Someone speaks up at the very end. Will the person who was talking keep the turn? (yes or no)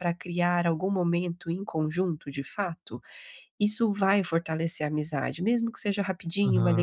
yes